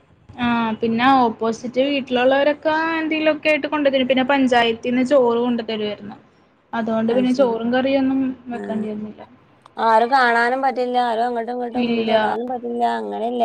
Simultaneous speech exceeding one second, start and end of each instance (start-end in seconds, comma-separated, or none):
none